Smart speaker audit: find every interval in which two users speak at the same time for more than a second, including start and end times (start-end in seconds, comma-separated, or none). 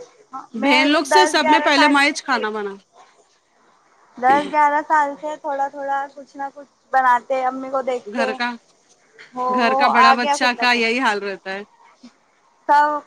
0.6-2.4